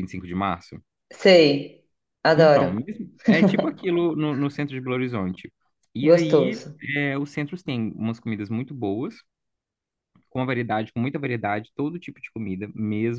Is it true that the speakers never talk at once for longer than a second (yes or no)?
yes